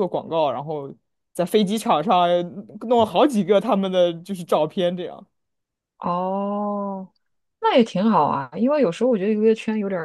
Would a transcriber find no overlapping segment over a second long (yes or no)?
yes